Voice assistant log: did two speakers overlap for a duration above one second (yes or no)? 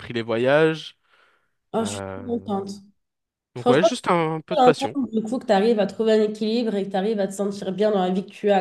no